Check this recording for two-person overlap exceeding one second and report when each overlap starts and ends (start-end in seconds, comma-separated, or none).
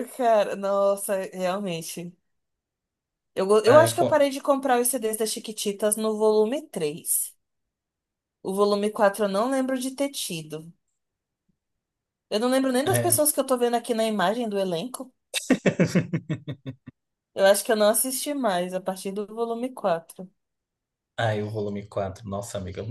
none